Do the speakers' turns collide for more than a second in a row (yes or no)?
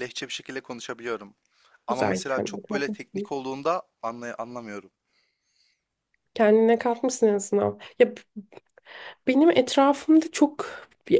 yes